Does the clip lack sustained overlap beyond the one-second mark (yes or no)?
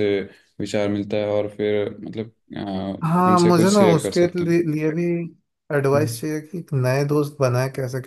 no